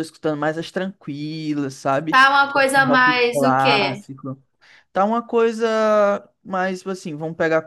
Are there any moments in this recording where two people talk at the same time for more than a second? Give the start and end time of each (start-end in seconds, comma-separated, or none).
2.1-4.0